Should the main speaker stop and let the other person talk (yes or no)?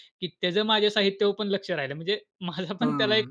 yes